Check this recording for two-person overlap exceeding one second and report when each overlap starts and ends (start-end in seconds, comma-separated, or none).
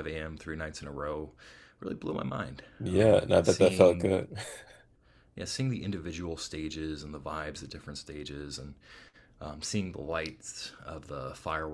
2.8-4.1